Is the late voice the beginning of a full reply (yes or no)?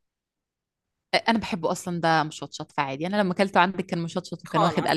yes